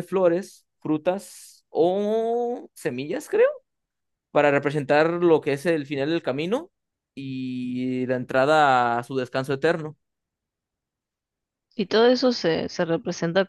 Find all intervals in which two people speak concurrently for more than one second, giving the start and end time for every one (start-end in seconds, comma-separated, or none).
none